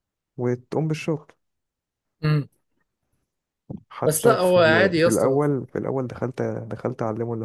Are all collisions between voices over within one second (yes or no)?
no